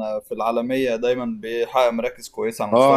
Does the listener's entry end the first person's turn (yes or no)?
yes